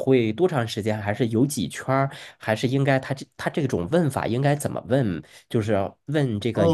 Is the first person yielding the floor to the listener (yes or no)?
yes